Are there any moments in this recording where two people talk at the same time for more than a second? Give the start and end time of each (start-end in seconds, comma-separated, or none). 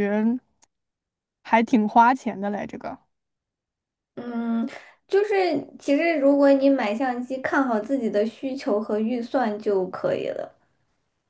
none